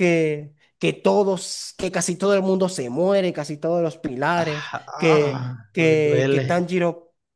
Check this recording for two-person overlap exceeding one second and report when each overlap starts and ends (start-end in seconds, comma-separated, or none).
4.3-6.5